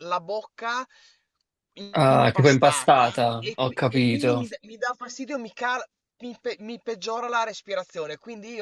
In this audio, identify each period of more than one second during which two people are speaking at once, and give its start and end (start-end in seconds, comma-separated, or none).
2.1-4.4